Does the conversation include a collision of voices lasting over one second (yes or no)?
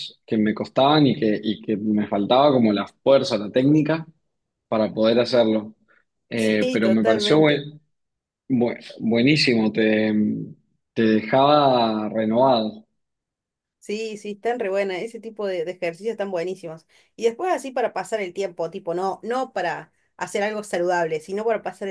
yes